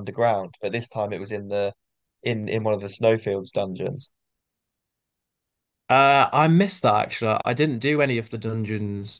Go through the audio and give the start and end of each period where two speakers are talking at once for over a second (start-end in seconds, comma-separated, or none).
none